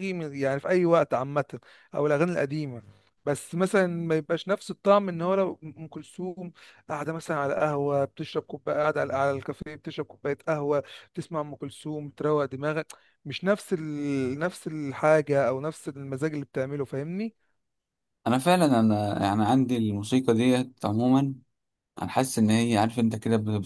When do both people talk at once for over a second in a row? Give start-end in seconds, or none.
none